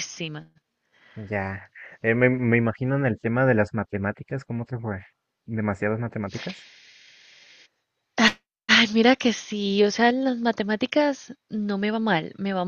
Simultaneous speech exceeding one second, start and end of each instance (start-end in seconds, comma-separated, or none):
none